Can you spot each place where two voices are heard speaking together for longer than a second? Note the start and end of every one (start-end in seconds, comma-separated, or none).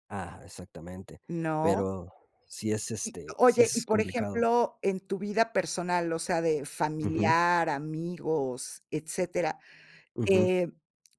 3.0-4.5